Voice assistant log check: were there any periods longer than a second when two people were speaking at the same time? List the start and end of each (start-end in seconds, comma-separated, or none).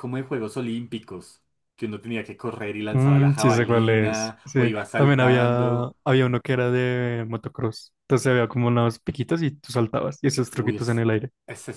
2.9-5.9